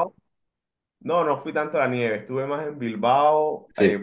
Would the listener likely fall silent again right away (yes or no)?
yes